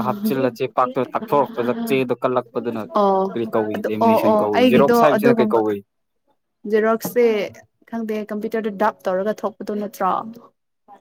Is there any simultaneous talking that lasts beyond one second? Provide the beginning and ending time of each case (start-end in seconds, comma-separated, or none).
3.7-5.6